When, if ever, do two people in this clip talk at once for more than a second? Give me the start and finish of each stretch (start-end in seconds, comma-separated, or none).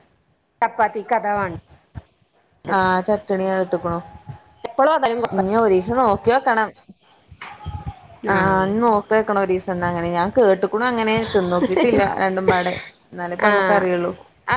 none